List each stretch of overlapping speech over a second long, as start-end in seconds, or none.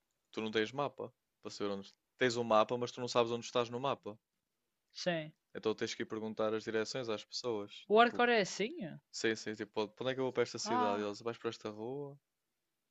none